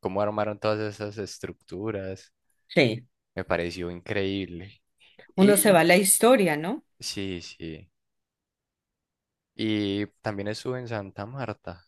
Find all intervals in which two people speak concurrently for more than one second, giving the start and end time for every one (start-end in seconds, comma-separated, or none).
none